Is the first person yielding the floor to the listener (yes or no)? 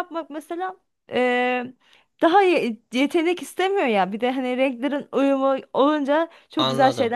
yes